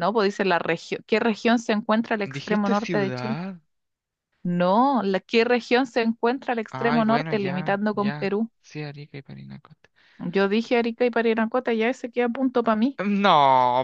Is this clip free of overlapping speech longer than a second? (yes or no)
no